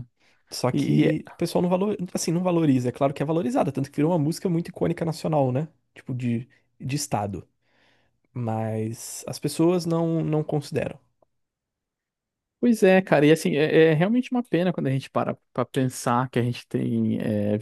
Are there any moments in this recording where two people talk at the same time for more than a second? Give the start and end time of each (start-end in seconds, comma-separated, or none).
none